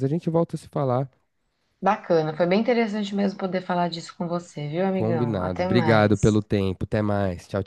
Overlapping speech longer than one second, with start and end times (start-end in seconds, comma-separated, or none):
4.9-6.4